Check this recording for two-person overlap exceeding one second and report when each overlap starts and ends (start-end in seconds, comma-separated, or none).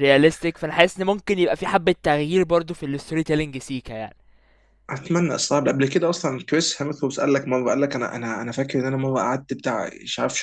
none